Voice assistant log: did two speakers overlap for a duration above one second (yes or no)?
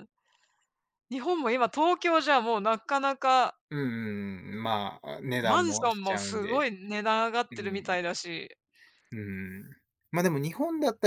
yes